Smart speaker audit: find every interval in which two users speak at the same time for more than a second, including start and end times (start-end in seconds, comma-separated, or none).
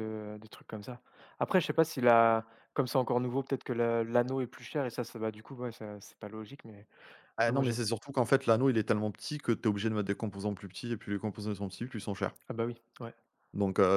none